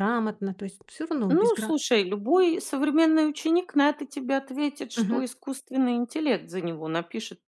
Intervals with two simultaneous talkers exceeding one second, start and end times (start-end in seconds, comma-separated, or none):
none